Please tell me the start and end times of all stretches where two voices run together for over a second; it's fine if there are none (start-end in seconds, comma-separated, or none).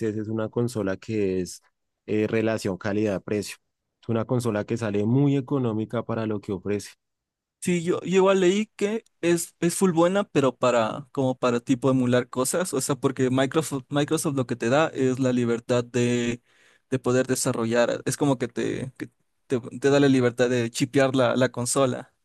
none